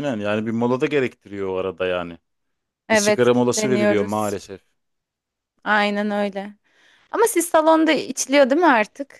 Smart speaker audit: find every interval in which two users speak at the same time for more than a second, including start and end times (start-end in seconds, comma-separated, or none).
2.9-4.4